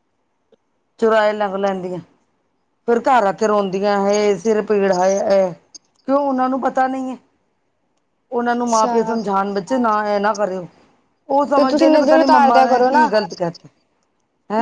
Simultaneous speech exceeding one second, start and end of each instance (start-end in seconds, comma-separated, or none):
11.5-13.1